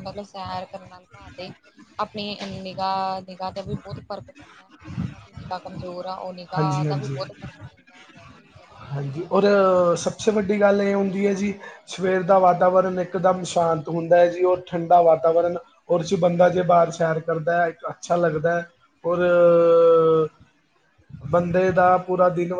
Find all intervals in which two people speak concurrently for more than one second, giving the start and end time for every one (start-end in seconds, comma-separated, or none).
none